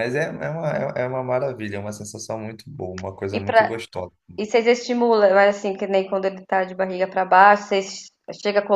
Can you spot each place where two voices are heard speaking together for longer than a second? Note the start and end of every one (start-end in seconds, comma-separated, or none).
none